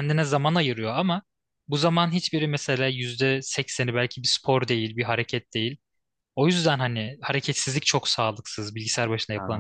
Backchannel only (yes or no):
no